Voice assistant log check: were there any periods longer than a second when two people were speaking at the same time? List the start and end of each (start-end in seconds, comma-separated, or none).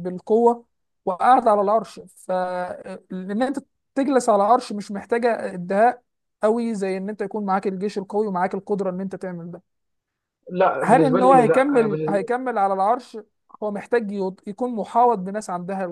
10.8-12.3